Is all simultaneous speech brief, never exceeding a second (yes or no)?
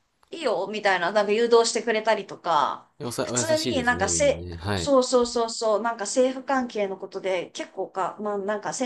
no